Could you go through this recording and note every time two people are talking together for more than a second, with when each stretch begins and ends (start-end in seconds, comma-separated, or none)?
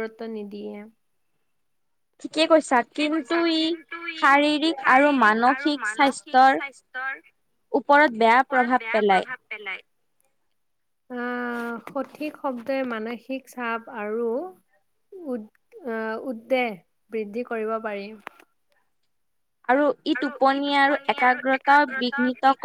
none